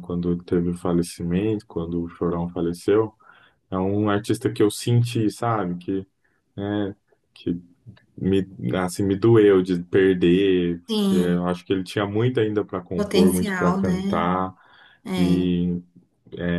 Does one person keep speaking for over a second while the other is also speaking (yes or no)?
yes